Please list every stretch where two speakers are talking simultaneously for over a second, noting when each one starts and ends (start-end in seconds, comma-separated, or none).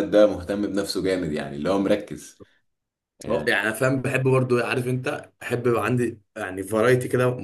none